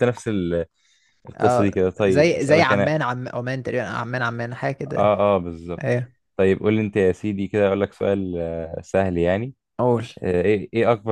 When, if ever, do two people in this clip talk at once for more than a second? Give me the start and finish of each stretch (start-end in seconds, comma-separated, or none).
1.4-3.0